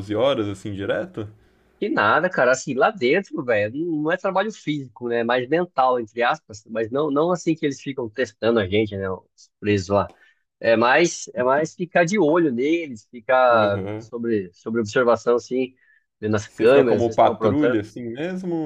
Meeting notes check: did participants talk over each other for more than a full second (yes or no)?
yes